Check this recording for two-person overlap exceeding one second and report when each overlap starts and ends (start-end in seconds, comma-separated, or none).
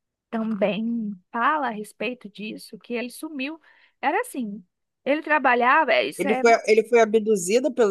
none